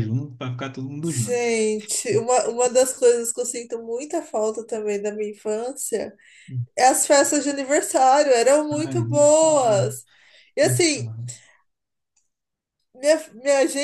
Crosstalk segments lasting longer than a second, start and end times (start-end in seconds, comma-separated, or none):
8.7-9.9